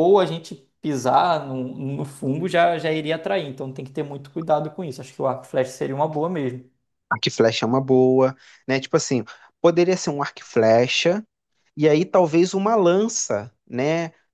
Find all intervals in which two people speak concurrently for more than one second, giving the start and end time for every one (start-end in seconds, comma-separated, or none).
none